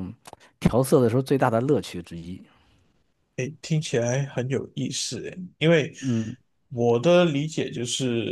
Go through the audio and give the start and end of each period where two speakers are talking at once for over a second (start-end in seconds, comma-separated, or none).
none